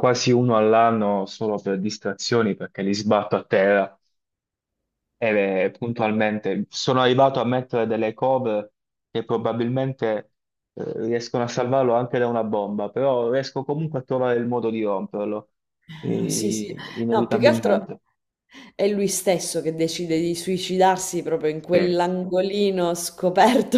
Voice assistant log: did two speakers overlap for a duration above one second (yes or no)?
yes